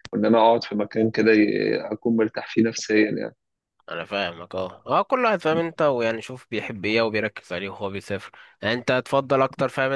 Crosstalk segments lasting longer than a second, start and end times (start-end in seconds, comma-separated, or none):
none